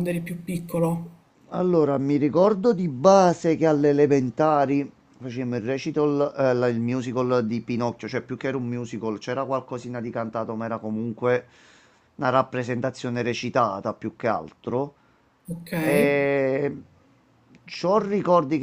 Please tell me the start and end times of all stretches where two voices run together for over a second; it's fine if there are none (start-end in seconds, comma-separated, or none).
none